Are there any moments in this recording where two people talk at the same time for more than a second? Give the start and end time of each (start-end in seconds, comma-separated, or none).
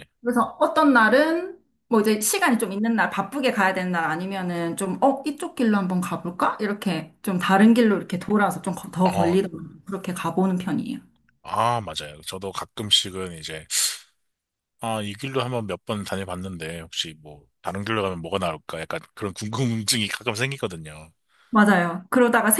none